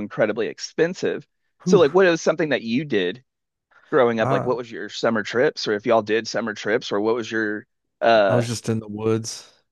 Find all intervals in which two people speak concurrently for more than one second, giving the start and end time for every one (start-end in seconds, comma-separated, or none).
none